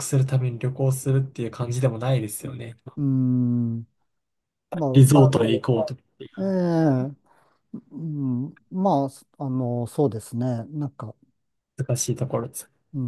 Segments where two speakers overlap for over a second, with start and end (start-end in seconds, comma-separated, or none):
none